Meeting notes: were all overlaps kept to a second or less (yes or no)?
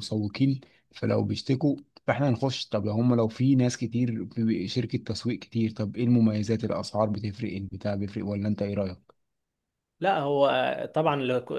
yes